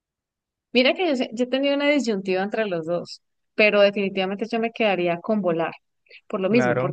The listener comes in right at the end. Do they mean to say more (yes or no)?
no